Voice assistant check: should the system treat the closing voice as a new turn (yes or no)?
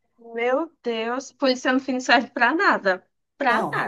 yes